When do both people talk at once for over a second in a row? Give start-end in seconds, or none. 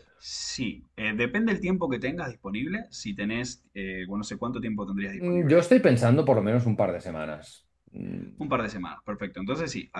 none